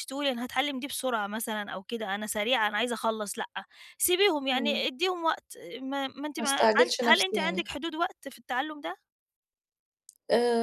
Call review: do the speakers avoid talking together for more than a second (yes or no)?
no